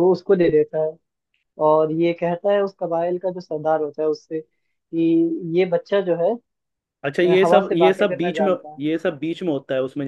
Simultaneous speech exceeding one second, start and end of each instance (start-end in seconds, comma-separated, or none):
7.3-8.8